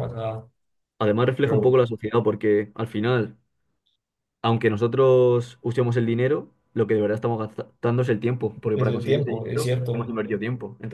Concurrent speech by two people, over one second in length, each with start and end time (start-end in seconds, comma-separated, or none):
8.7-10.1